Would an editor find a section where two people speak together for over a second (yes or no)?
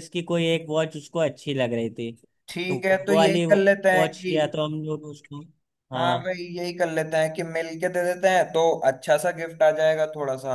yes